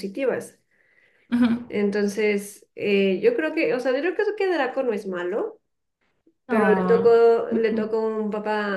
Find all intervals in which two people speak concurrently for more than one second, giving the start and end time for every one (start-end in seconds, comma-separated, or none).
6.5-8.0